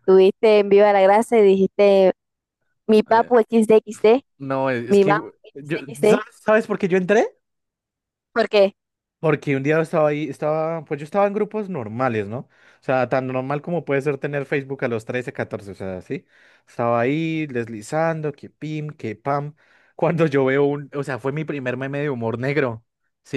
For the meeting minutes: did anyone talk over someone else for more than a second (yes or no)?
no